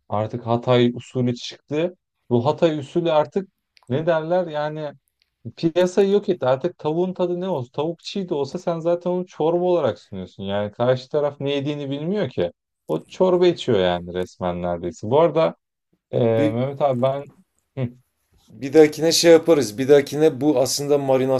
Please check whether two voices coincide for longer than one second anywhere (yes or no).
no